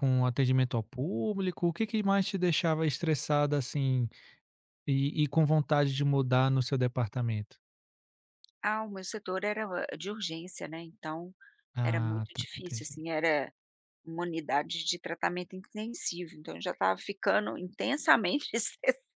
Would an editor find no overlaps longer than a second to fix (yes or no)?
no